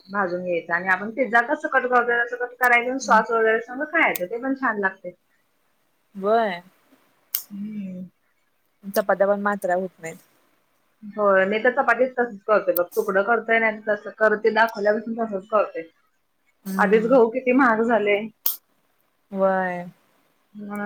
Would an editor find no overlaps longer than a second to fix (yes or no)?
yes